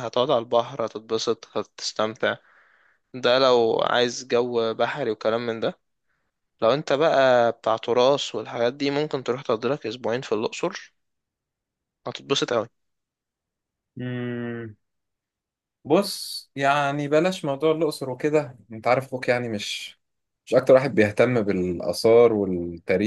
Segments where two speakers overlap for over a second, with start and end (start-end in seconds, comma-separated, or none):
none